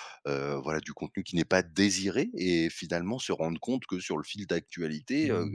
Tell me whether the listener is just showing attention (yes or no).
yes